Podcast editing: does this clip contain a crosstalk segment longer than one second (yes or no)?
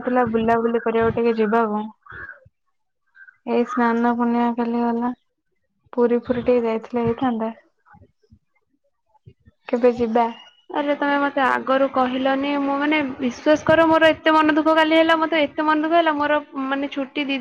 no